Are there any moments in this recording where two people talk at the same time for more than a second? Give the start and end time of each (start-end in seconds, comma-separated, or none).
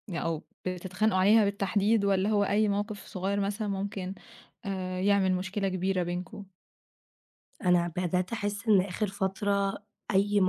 none